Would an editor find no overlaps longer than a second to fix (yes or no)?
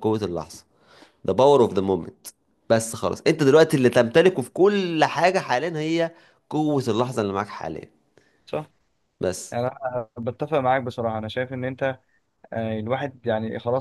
yes